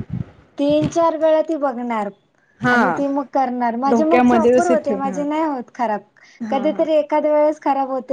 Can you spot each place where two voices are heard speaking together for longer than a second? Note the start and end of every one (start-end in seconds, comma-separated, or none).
3.9-5.2